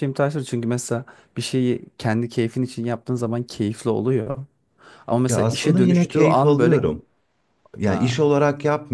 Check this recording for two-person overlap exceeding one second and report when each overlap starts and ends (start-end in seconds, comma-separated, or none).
5.3-6.8